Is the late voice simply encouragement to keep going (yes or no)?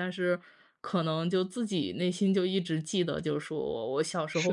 yes